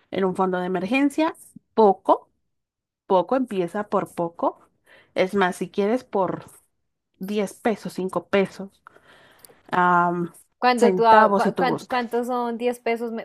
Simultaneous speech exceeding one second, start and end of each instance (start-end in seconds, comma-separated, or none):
10.8-12.0